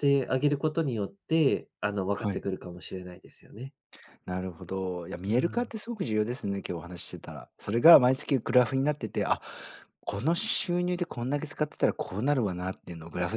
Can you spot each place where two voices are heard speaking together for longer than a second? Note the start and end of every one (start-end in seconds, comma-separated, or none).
none